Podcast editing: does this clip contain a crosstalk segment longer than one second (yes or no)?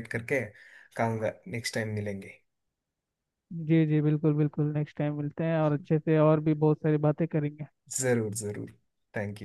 no